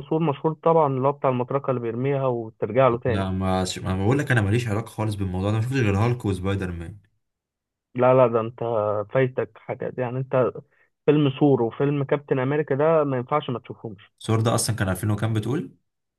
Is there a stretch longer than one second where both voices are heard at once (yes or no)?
no